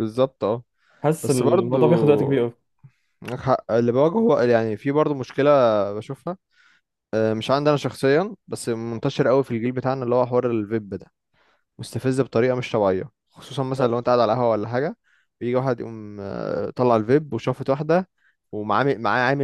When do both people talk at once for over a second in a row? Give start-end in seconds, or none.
1.2-2.5